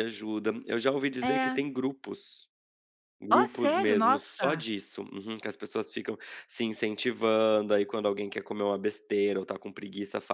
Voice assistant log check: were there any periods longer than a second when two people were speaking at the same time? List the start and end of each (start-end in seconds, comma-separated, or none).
3.3-4.7